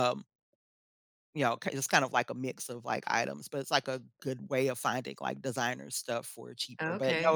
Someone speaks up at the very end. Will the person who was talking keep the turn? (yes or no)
no